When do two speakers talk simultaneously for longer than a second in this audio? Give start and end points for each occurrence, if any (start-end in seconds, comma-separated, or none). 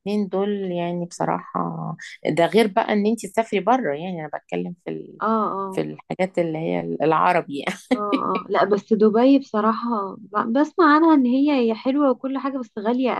none